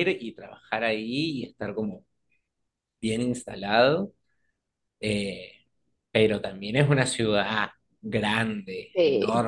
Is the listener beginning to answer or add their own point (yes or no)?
no